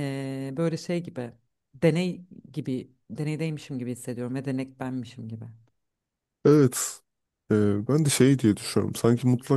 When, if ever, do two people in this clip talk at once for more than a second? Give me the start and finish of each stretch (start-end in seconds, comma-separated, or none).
none